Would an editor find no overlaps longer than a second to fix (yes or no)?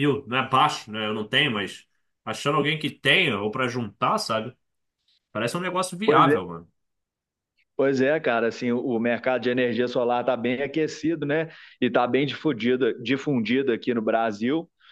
yes